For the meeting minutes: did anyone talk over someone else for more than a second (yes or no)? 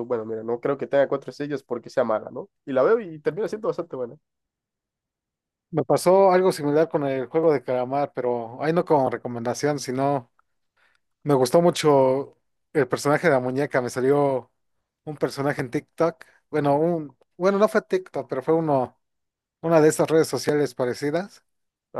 no